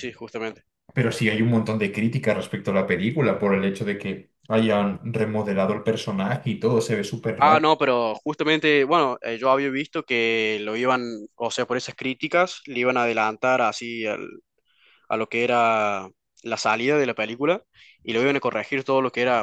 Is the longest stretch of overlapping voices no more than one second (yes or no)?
yes